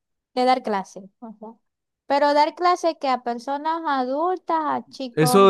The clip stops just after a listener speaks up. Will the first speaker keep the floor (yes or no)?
no